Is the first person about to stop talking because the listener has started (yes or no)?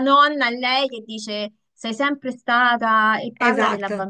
no